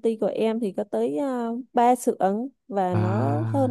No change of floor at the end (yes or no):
yes